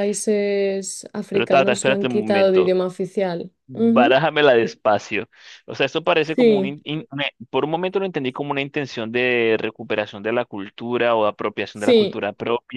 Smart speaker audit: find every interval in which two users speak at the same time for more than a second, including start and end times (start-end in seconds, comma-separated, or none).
1.3-2.8